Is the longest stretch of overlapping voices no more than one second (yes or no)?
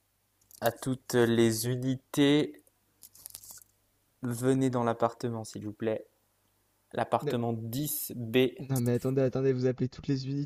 yes